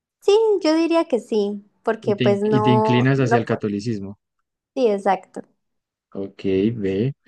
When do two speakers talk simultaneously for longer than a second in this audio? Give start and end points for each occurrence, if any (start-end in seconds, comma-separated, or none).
2.0-3.6